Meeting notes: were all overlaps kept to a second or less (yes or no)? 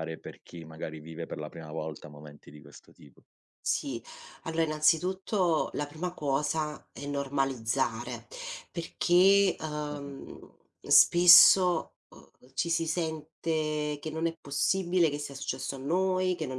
yes